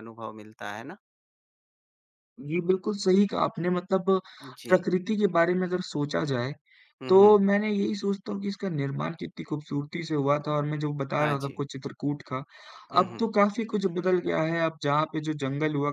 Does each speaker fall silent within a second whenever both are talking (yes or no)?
yes